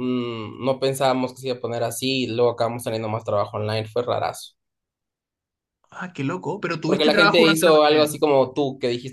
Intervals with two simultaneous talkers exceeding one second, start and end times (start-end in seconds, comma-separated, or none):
6.9-8.2